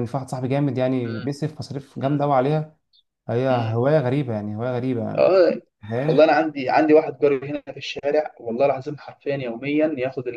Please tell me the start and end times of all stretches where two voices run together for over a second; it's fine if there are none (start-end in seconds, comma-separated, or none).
none